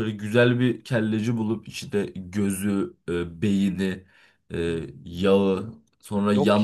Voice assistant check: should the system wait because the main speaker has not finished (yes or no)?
yes